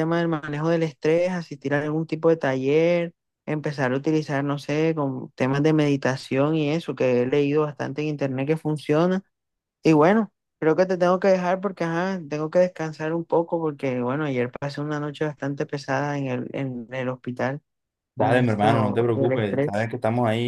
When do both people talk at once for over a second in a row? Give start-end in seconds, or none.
18.2-19.9